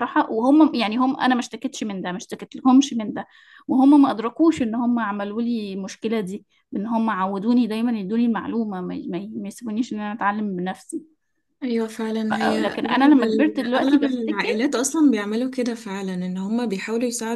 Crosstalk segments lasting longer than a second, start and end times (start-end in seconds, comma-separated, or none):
12.3-14.6